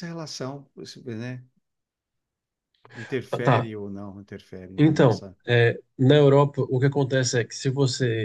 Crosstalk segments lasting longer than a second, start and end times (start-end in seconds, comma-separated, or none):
none